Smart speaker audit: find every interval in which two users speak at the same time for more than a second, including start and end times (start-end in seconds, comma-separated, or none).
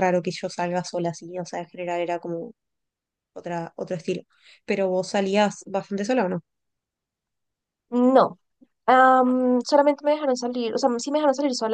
none